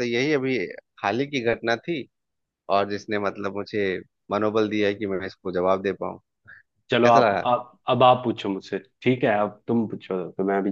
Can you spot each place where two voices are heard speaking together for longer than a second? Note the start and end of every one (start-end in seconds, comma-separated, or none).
none